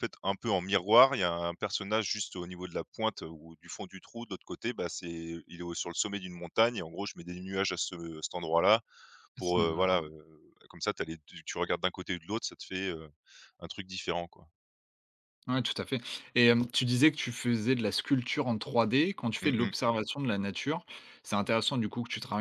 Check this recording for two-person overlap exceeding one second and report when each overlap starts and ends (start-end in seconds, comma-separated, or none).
none